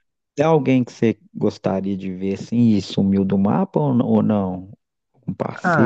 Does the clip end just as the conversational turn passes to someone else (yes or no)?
yes